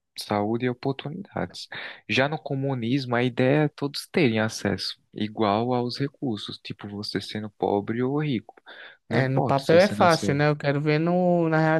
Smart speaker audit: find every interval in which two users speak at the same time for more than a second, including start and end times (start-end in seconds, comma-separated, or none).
9.1-10.4